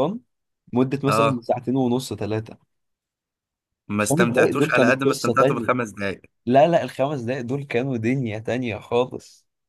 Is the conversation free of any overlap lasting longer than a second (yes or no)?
no